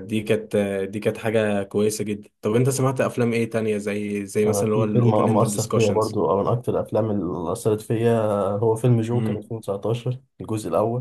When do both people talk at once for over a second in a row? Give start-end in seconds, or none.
4.5-6.1